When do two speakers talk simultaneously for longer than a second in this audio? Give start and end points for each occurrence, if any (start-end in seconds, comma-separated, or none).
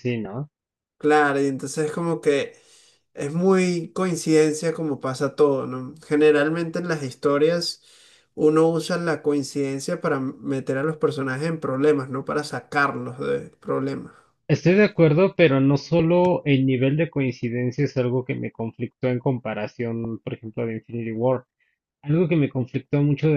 none